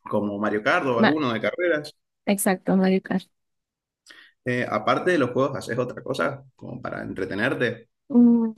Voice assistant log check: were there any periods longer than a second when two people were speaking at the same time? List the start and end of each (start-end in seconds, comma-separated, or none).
none